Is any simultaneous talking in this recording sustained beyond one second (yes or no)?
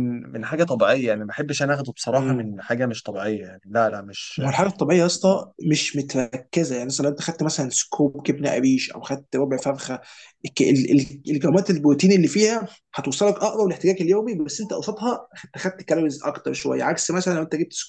no